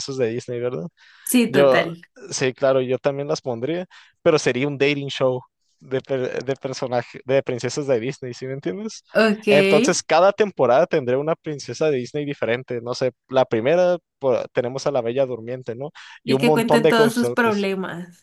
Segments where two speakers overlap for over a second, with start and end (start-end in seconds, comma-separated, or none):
16.2-17.7